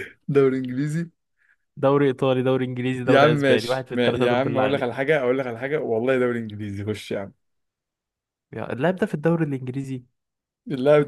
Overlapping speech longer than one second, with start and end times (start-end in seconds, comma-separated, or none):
3.1-5.1